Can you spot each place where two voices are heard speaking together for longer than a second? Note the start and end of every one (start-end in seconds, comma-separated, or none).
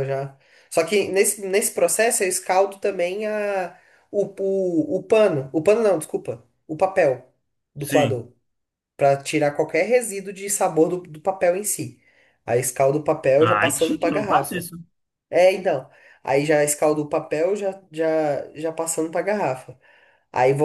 13.4-14.7